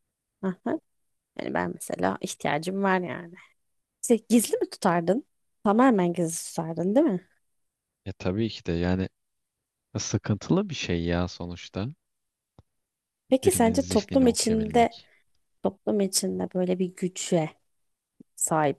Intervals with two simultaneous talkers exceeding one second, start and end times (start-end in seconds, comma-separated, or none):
13.4-15.0